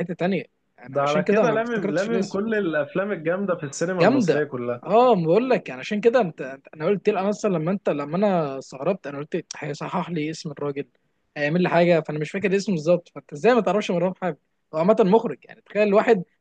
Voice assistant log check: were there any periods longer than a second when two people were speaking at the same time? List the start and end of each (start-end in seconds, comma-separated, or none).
0.9-2.4